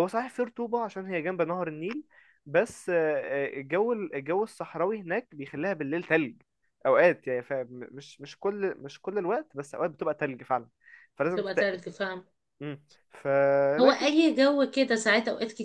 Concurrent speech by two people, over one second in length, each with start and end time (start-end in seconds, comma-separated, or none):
none